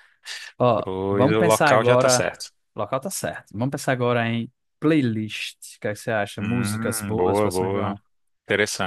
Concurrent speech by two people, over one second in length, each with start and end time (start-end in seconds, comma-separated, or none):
0.8-2.3, 6.4-8.0